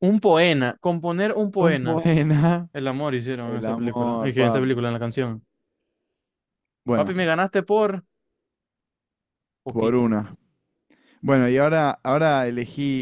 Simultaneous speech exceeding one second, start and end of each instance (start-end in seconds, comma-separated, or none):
3.4-4.8